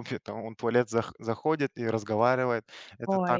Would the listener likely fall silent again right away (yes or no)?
yes